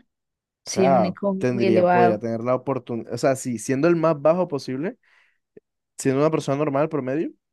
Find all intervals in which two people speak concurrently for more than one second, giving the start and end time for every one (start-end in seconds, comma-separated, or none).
0.7-2.2